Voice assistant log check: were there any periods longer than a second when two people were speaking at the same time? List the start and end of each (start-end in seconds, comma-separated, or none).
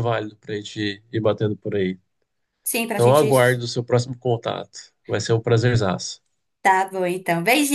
none